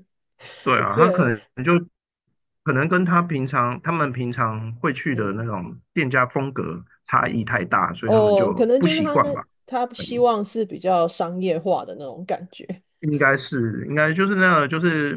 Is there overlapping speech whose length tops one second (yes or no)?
yes